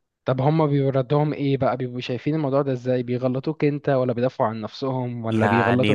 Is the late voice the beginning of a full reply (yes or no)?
yes